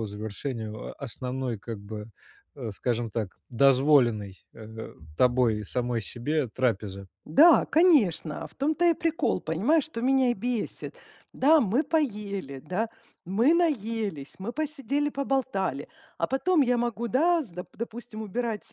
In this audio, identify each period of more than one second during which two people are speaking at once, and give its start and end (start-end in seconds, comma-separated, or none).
none